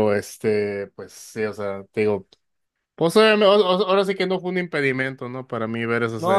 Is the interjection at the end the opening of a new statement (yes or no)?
yes